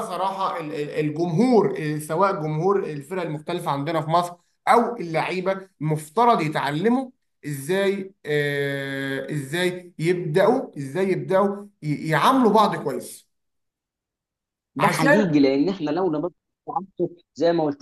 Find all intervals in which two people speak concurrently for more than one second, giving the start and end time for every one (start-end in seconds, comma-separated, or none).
none